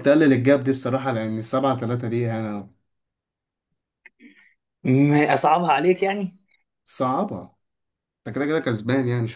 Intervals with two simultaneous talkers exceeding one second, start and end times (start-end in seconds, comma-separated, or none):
none